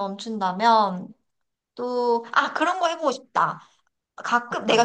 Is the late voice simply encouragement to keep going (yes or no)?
yes